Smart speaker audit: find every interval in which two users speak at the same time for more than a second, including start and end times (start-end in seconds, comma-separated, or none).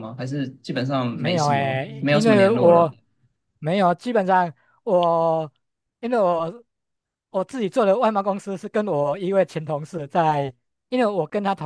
1.1-2.9